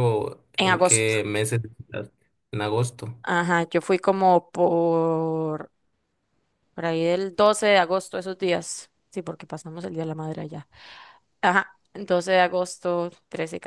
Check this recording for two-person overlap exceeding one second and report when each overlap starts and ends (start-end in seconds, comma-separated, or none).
none